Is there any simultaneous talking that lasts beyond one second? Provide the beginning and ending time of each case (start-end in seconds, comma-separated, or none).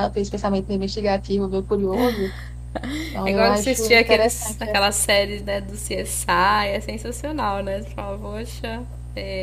3.2-4.7